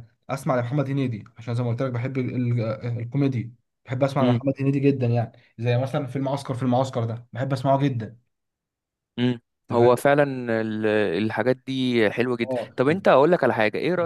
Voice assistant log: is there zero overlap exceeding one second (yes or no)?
yes